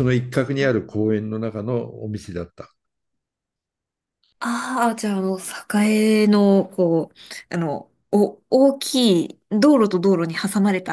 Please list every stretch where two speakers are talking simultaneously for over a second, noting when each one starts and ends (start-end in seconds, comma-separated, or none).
none